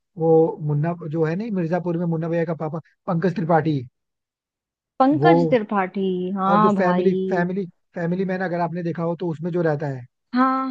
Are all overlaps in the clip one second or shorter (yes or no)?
yes